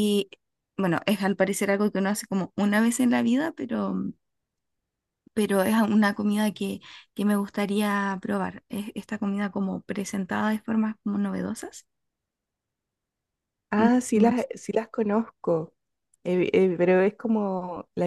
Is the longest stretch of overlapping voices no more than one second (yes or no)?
yes